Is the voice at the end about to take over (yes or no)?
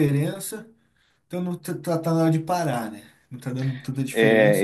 yes